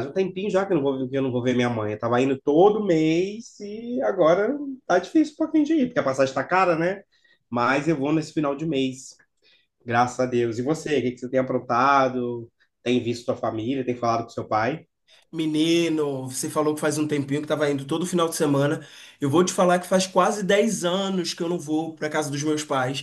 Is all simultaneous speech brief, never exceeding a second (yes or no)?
yes